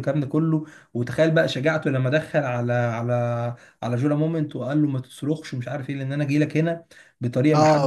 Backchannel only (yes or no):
no